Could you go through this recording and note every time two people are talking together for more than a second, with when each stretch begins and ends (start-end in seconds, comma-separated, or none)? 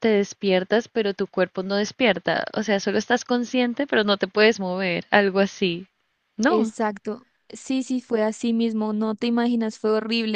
none